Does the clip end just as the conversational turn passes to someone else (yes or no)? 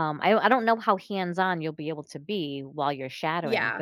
no